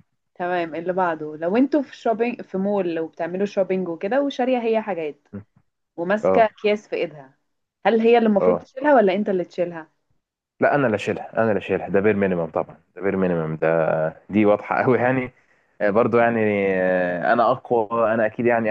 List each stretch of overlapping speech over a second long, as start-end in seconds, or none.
none